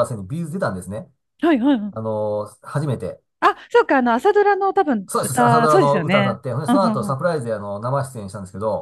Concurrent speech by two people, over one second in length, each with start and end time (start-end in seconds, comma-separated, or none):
5.1-7.2